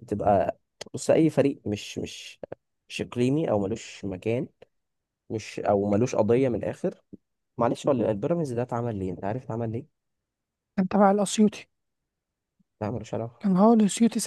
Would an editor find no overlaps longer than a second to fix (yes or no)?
yes